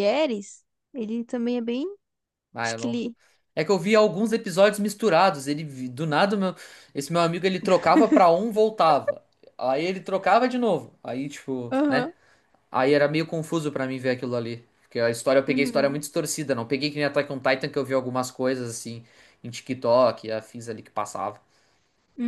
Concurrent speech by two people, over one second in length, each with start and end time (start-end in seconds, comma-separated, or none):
none